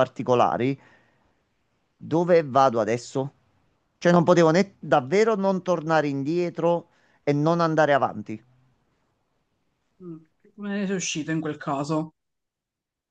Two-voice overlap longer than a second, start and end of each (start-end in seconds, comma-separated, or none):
none